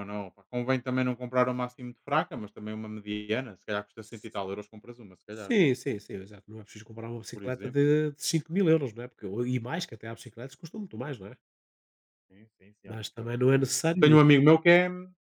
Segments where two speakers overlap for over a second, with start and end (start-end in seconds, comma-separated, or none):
12.9-14.2